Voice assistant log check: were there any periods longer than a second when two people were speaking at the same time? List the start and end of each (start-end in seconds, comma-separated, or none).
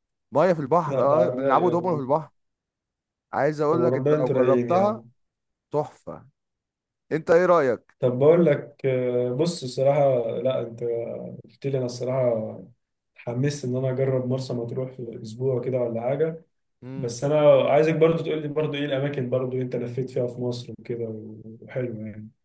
0.9-2.1, 3.7-5.0